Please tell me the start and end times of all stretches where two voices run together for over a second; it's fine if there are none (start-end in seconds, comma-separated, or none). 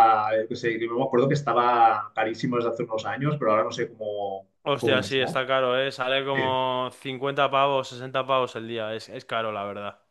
none